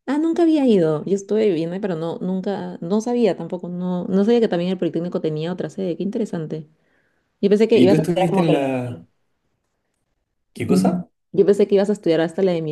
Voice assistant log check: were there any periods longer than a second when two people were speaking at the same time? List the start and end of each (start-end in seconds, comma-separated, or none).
7.7-9.1